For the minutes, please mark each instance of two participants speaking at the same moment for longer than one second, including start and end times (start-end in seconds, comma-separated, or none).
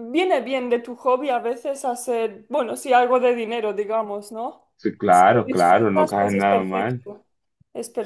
5.1-7.0